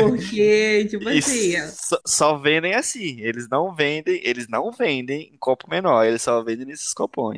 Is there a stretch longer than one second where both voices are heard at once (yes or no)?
no